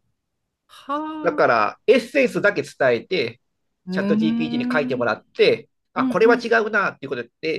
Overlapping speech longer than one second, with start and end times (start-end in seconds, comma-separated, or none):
3.9-5.1